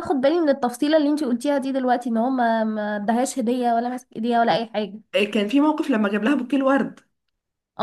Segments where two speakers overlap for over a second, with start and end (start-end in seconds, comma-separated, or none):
none